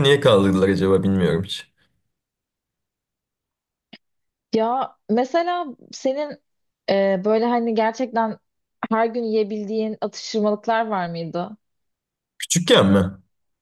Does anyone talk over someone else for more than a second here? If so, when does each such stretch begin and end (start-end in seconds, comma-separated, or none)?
none